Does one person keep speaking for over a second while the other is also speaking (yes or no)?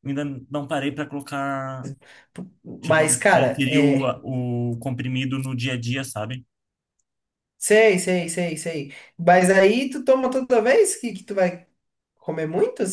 yes